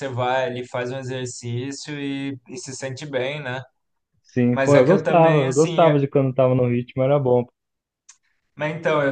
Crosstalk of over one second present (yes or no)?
yes